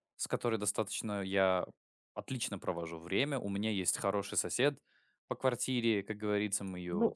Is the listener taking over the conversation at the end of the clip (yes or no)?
no